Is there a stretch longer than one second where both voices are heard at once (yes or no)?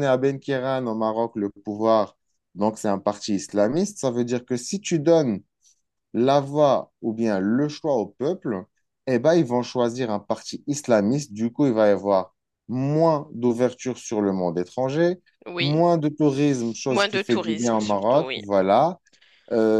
yes